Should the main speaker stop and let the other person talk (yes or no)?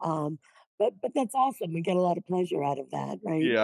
yes